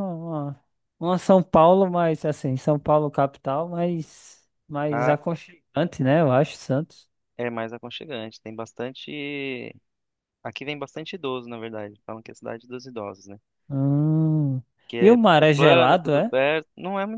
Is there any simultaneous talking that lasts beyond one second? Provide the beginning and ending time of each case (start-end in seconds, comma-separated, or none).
15.0-16.3